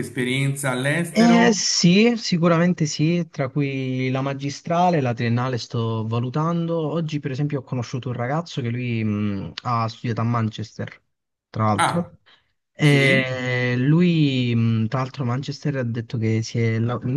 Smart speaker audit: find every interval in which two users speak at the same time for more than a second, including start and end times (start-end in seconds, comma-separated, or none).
none